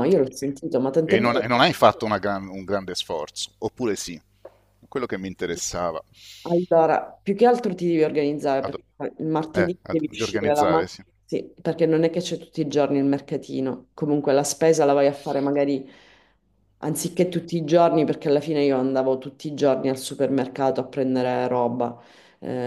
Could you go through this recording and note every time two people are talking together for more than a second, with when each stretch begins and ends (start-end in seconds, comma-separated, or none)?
9.5-11.0